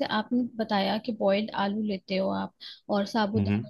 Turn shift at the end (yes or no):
no